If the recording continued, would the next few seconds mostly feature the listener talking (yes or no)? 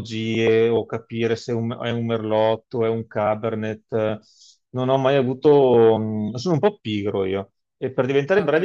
no